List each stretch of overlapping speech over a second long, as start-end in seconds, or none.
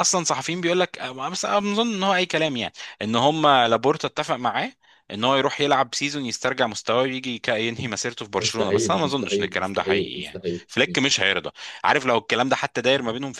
8.4-10.6